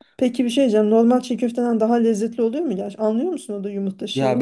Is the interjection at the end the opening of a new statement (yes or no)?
yes